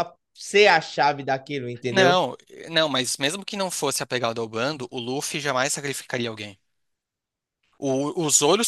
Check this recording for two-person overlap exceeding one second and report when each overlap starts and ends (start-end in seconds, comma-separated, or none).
none